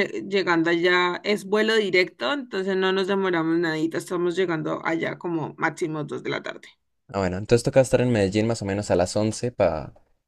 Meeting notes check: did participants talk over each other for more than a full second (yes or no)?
no